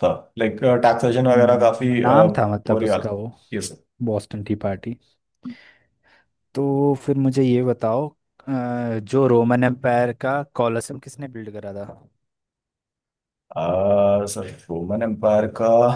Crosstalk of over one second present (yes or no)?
yes